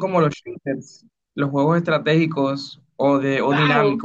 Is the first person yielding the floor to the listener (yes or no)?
yes